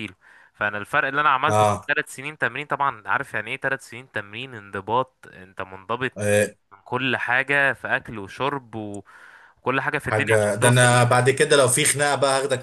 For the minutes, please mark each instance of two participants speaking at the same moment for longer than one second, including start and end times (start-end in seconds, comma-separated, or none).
10.0-11.6